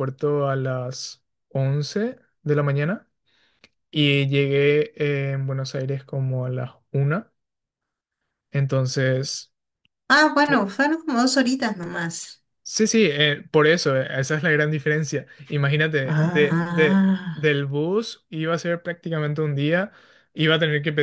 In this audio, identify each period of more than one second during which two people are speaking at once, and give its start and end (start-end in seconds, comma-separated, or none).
16.0-17.4